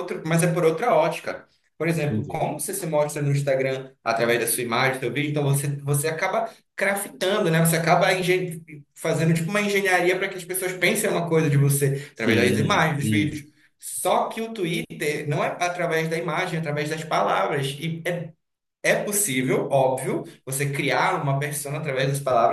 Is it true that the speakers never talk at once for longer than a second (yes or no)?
no